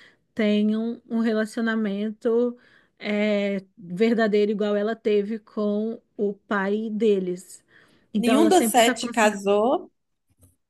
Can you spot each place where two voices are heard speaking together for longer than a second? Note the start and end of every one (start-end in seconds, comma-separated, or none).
8.2-9.5